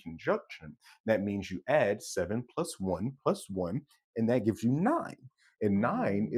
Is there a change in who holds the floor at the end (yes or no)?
no